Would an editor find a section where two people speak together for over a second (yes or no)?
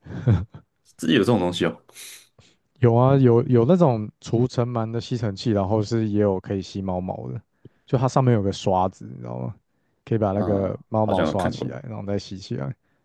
yes